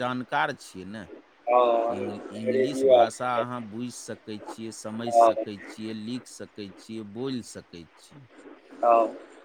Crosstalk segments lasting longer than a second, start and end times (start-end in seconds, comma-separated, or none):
2.0-3.5